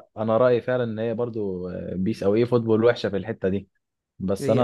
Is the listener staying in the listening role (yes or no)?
yes